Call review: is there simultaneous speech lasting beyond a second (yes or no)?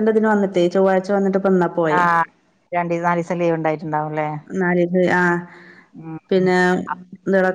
no